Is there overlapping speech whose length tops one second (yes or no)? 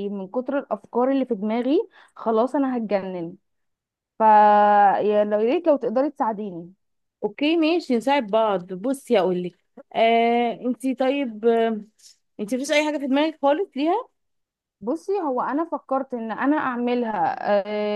no